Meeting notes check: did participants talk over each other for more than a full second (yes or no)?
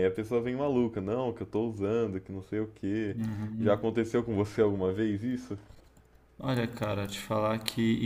no